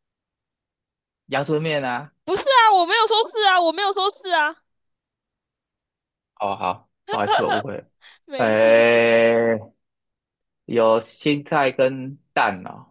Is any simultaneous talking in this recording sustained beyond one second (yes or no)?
no